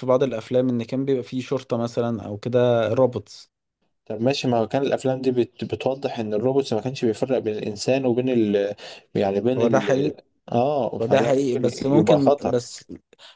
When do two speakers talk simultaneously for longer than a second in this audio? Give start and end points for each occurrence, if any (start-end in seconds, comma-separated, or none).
11.0-12.6